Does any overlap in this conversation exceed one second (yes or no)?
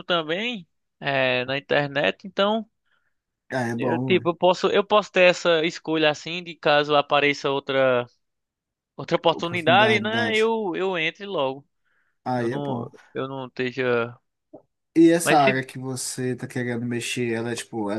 yes